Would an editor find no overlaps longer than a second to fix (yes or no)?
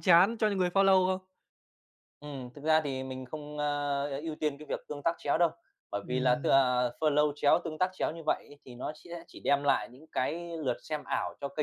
yes